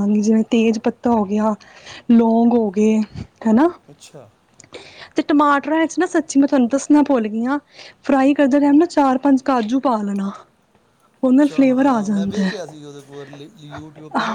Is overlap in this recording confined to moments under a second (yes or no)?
no